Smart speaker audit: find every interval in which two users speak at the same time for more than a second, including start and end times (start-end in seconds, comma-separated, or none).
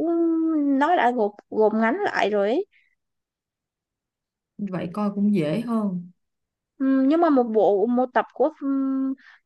none